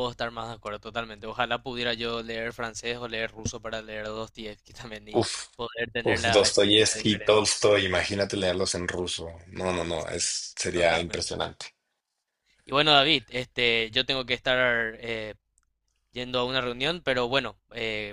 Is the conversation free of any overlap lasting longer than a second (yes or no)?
no